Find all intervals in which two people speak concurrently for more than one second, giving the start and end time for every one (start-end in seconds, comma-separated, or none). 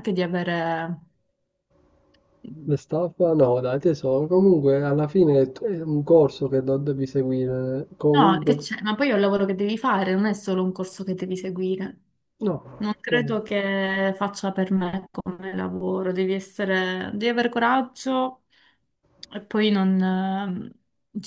none